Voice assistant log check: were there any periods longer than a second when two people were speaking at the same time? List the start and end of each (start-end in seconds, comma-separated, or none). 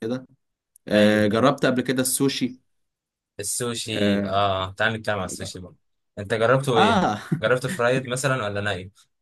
none